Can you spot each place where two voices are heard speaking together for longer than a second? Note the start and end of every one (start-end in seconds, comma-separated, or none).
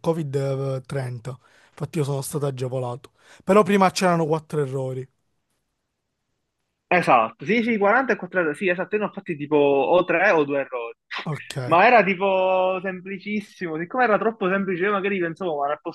none